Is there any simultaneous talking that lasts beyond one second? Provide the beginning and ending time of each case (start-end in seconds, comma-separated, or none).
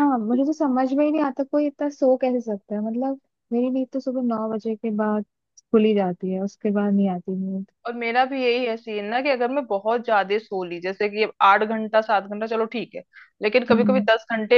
none